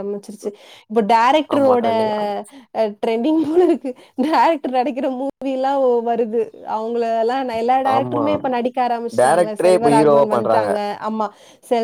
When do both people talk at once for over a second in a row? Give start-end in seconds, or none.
9.2-10.7